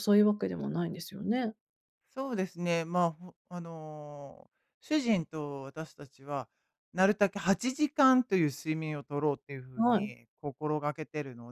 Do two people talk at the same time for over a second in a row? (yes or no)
no